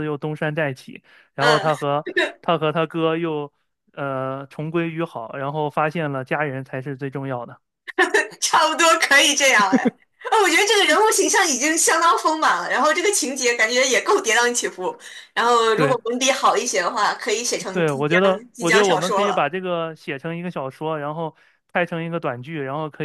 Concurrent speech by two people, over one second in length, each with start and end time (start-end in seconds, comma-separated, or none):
17.7-19.5